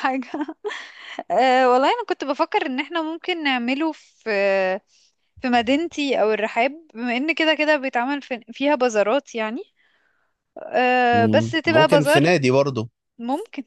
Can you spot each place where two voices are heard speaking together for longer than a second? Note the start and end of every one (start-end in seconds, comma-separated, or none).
11.1-12.4